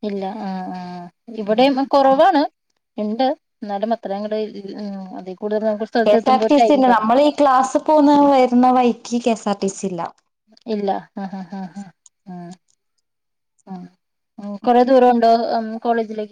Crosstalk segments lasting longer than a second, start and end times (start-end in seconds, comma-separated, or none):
none